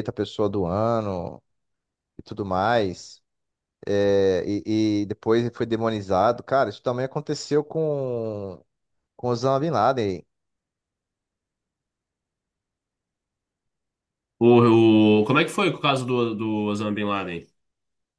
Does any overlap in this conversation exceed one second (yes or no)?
no